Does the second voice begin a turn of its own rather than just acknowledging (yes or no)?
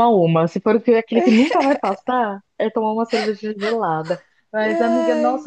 no